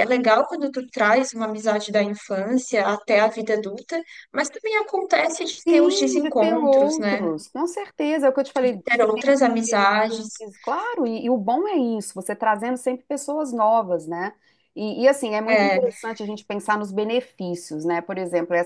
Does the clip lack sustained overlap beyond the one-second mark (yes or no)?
no